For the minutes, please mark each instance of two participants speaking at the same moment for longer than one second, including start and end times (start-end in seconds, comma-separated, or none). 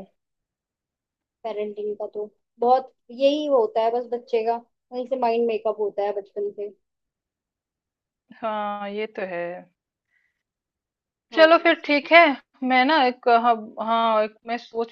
none